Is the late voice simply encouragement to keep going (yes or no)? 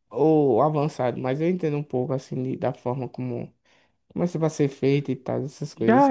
no